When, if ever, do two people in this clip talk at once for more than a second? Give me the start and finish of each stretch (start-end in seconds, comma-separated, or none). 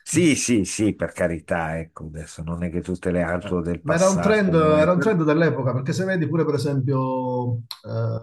3.4-5.2